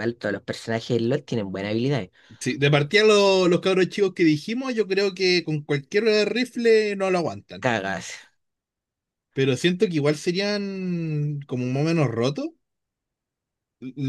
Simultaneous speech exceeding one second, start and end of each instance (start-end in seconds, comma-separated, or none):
none